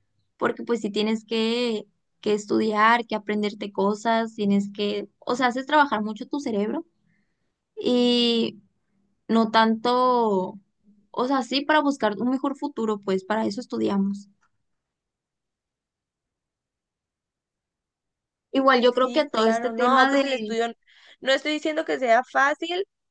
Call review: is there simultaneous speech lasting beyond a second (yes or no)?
yes